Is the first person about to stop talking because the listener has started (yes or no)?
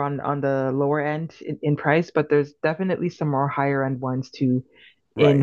yes